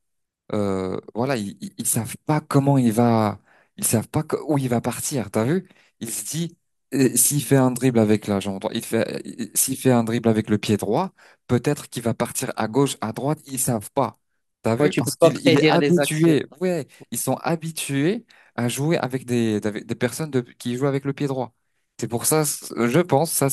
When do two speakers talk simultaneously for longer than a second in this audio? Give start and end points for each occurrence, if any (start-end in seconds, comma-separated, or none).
14.8-16.4